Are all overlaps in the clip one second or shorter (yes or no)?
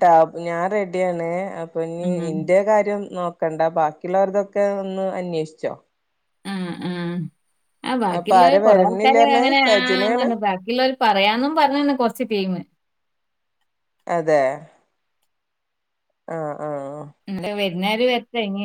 no